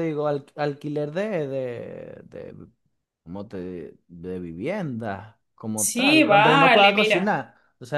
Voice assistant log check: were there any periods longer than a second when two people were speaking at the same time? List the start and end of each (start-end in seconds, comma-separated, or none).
5.7-7.4